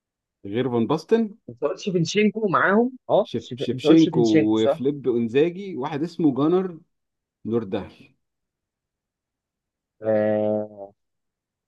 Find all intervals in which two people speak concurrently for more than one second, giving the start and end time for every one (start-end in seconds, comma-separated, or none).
3.2-4.8